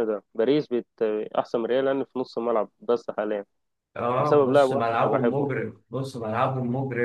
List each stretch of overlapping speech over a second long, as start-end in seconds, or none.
4.2-5.5